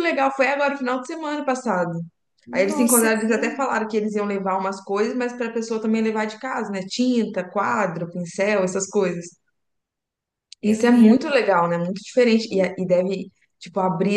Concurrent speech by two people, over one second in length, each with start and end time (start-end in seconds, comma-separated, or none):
2.5-3.8